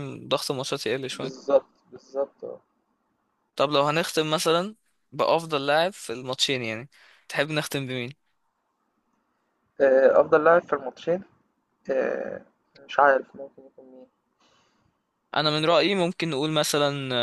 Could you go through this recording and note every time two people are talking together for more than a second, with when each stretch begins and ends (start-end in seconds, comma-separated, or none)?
none